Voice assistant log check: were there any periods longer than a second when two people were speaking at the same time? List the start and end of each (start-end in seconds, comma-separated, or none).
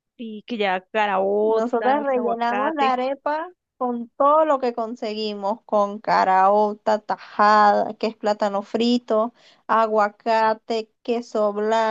1.4-3.0